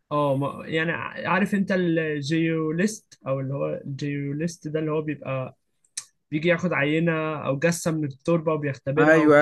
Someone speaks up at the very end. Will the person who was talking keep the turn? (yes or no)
no